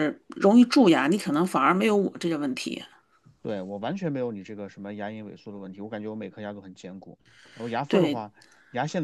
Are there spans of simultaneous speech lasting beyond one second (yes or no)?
no